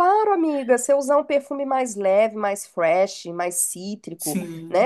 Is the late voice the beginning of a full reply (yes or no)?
no